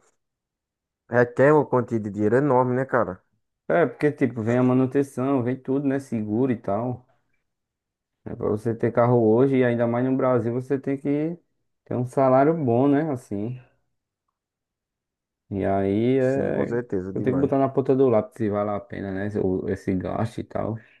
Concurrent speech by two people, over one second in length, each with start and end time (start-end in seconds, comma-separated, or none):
16.2-17.5